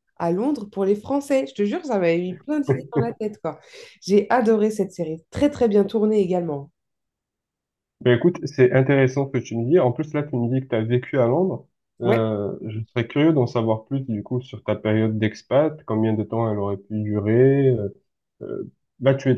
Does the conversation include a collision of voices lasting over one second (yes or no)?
no